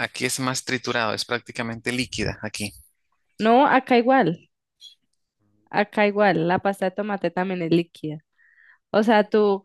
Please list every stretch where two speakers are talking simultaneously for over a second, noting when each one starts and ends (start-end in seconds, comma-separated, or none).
none